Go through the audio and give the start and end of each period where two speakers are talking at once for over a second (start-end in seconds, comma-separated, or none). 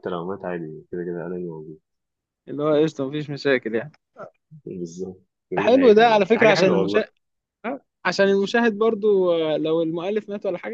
5.6-7.0